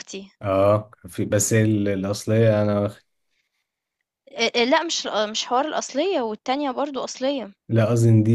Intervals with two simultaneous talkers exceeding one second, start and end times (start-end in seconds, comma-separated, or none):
none